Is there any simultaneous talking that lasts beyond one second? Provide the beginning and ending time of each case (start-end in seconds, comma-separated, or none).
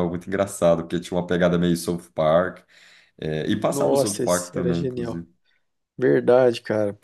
3.6-5.2